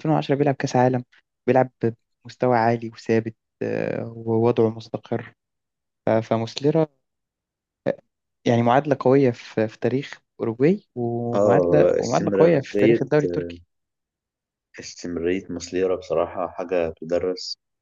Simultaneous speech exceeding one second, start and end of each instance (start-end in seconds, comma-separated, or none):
11.3-13.0